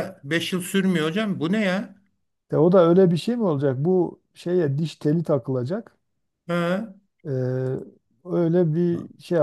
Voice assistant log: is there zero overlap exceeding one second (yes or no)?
yes